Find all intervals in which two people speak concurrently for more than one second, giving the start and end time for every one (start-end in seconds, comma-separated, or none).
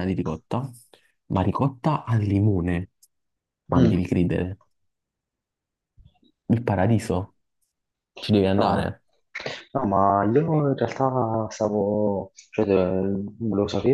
none